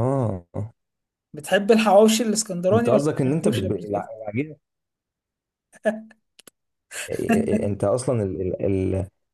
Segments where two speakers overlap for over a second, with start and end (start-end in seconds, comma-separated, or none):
2.7-4.1